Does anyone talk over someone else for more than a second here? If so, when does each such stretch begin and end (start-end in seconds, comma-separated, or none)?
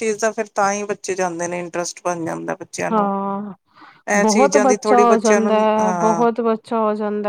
4.7-6.2